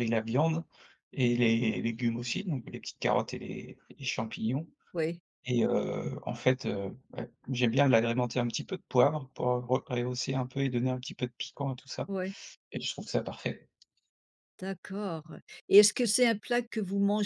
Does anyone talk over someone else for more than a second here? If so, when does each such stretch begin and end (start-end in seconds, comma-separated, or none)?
none